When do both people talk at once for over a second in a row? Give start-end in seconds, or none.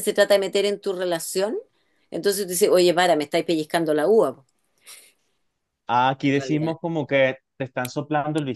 none